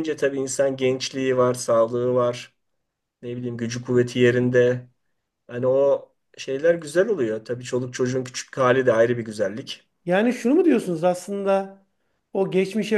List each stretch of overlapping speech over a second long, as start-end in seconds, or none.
none